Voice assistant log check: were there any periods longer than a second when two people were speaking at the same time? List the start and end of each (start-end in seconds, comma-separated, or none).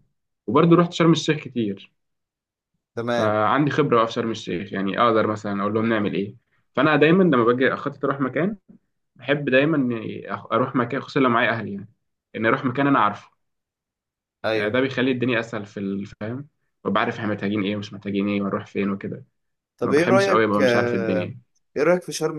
19.8-21.3